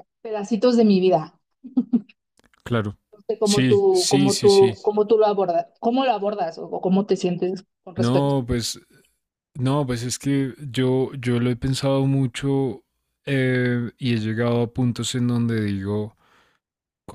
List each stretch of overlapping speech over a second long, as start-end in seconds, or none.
3.4-4.8